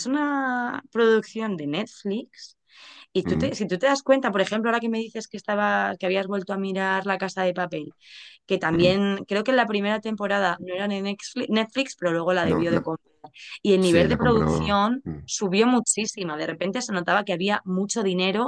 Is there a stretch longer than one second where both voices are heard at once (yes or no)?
yes